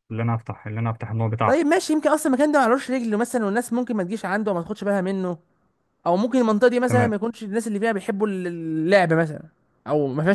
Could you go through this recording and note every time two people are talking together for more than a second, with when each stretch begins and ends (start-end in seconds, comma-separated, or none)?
none